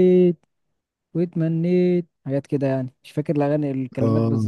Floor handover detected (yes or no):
yes